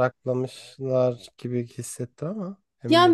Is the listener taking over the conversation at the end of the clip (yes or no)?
yes